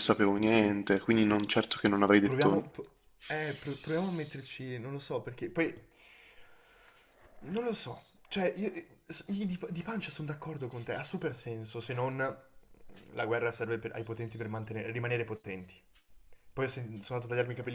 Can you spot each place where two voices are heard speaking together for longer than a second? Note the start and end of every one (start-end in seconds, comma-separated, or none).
none